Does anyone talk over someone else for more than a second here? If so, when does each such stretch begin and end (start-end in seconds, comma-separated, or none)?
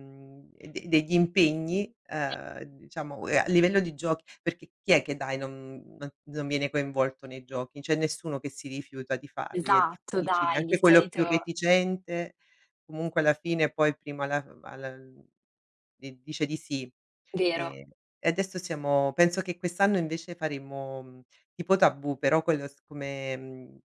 9.5-11.5